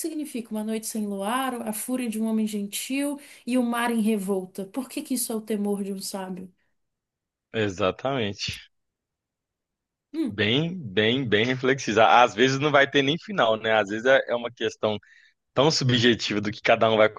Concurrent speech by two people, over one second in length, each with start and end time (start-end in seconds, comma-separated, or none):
none